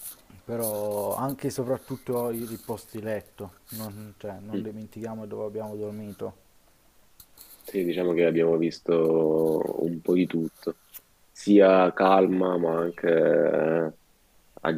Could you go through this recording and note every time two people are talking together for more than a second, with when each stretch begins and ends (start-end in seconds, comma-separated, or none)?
none